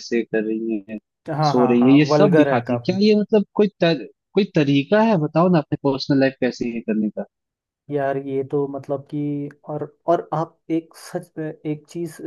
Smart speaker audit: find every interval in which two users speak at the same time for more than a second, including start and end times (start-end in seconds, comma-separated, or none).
1.5-3.0